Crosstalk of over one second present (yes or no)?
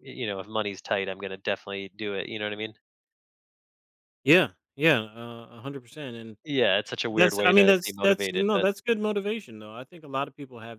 yes